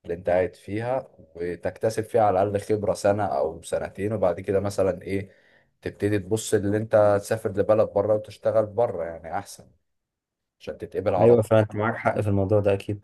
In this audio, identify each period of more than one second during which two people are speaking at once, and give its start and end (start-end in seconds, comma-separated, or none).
none